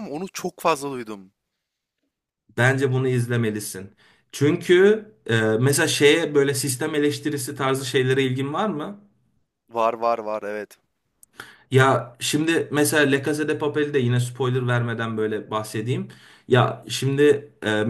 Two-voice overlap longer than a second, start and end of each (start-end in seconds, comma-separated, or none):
none